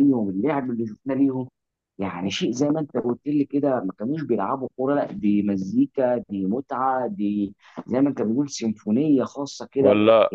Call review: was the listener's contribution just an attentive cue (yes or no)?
no